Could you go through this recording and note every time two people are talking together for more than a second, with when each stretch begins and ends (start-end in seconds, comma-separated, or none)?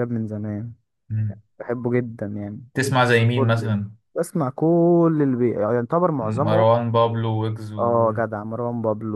none